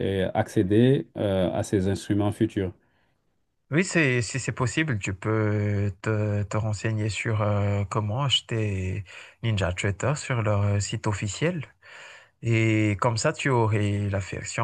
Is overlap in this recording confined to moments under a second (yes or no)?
yes